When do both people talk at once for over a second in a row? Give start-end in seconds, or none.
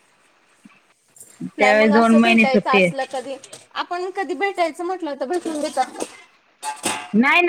1.6-3.0